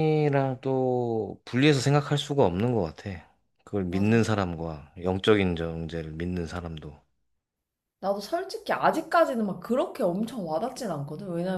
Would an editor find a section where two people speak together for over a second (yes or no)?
no